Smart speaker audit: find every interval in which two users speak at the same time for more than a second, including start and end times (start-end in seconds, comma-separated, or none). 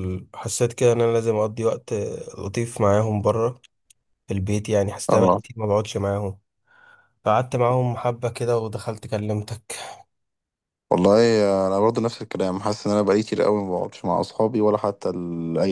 none